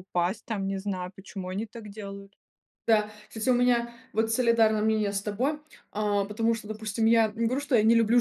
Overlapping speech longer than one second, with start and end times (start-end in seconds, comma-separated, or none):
none